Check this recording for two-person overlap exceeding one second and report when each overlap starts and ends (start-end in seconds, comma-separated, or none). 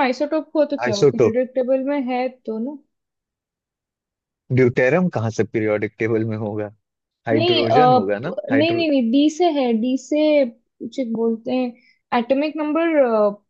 7.3-8.8